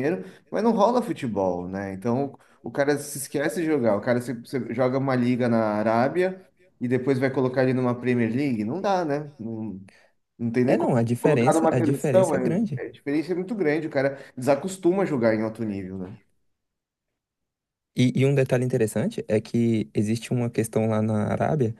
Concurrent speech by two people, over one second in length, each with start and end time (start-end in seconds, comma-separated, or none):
10.7-12.8